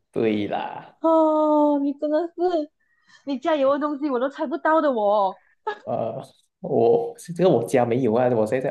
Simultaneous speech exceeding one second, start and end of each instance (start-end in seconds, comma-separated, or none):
none